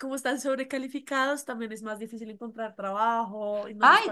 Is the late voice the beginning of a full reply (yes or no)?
yes